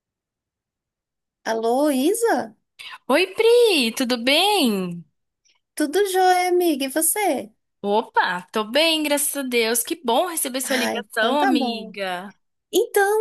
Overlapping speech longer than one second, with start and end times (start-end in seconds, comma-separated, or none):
10.6-11.9